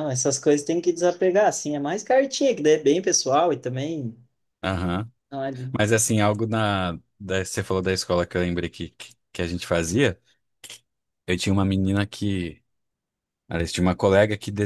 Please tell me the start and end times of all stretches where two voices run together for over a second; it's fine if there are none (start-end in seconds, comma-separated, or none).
none